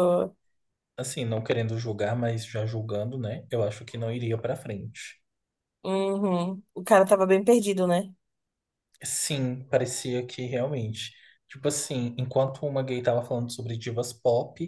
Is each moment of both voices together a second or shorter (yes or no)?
yes